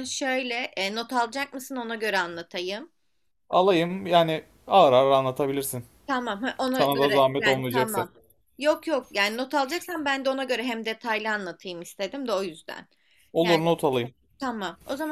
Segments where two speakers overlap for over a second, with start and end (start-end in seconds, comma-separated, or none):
6.7-8.0